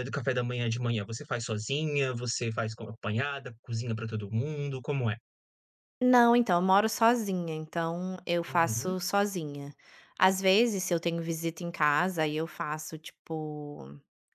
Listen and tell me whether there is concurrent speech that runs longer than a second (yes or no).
no